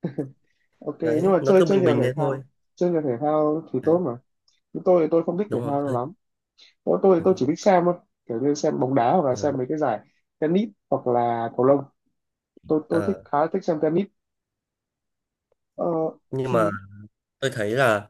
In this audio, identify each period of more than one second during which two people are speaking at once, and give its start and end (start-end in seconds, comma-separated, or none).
1.0-2.4